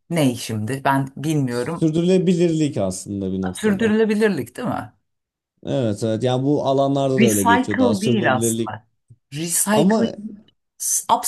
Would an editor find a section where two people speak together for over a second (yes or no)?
yes